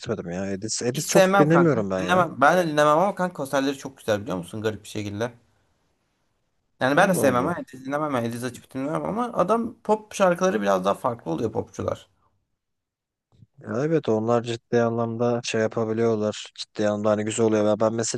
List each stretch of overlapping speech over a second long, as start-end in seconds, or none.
0.9-2.2